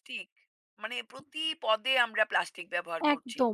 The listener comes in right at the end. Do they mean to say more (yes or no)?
yes